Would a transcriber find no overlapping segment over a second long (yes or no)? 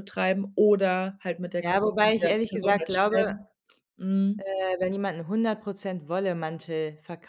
no